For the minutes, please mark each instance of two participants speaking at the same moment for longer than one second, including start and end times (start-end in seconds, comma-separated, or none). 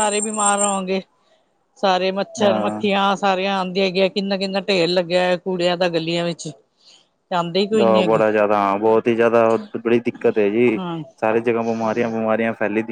none